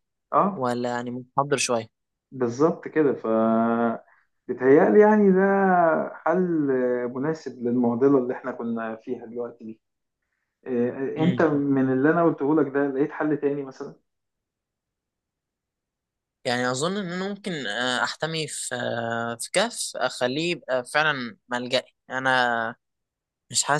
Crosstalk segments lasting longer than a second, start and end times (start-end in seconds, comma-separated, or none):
none